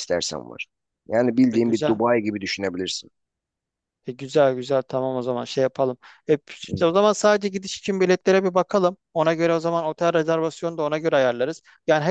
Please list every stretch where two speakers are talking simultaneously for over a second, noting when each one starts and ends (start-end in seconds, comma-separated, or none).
none